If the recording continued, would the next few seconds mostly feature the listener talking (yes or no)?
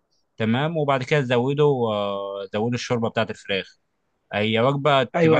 no